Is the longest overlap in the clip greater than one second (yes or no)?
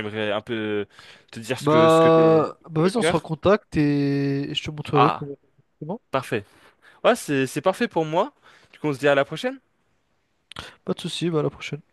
yes